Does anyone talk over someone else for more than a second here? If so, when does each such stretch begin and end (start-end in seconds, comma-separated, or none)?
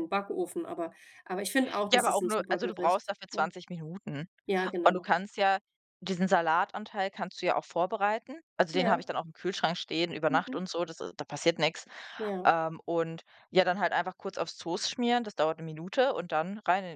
1.9-3.4